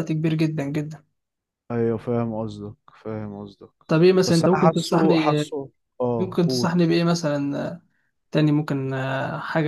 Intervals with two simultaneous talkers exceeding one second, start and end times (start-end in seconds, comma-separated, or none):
4.3-5.5